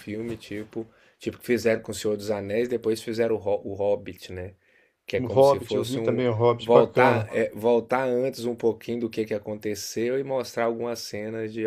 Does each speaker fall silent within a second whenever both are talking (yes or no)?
no